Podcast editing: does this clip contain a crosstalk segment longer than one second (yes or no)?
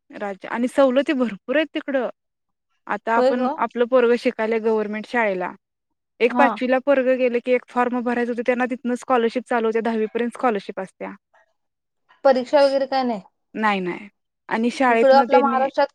no